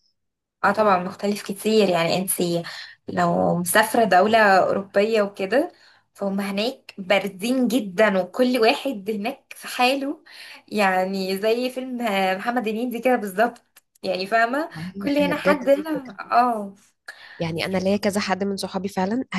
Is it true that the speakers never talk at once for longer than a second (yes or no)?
no